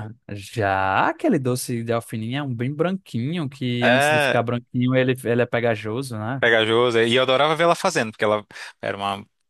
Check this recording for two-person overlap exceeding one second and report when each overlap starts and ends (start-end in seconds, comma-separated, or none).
none